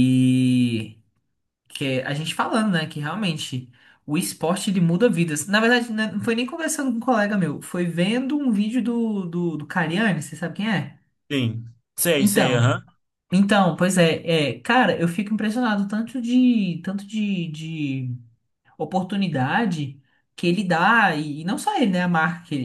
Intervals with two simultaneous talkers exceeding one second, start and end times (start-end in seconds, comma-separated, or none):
none